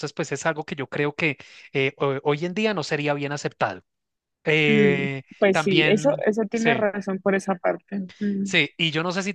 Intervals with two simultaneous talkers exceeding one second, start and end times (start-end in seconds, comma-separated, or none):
4.7-6.8